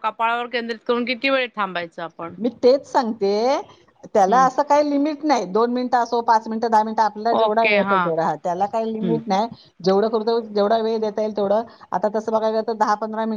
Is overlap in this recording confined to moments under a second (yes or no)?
yes